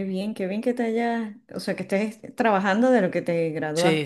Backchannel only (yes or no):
no